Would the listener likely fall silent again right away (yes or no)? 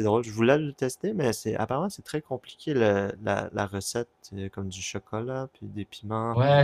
no